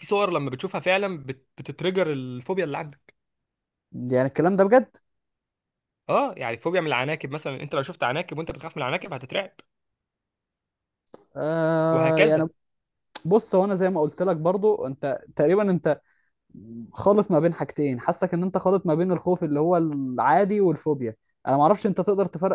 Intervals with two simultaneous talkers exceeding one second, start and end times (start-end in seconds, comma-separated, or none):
none